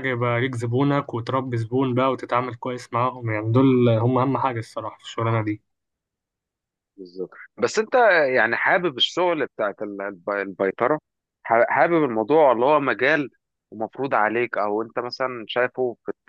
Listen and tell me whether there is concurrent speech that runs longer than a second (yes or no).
no